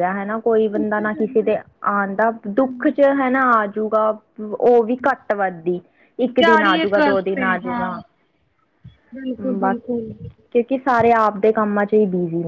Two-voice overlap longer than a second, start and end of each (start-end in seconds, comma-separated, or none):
6.4-7.9